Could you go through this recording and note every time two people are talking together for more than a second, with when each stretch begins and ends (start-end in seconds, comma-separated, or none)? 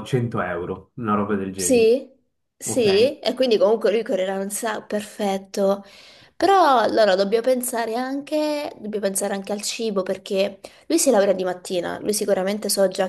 none